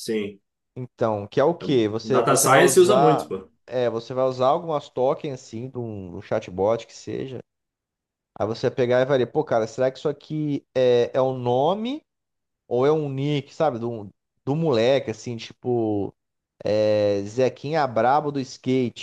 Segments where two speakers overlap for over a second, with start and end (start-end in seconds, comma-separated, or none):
2.0-3.3